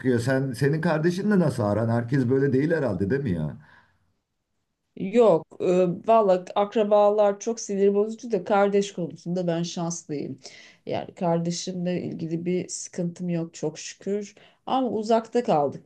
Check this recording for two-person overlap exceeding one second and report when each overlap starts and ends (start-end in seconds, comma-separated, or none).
none